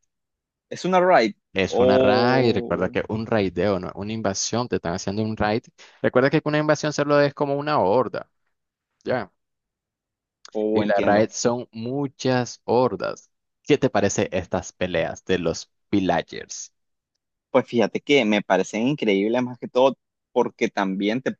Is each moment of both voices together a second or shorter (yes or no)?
no